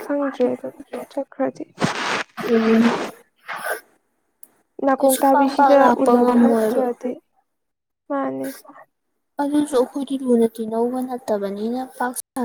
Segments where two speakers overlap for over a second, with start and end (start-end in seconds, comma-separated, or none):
5.0-6.8